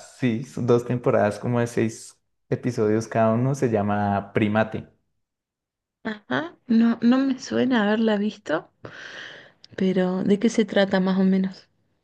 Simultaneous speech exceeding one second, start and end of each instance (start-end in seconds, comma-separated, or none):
none